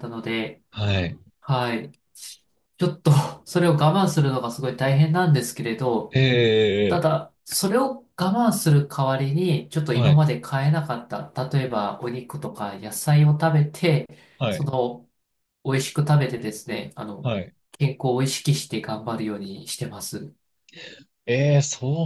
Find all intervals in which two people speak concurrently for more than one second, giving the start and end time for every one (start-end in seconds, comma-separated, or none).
none